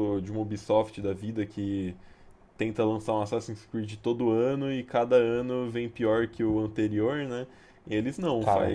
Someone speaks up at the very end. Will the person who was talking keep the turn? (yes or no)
yes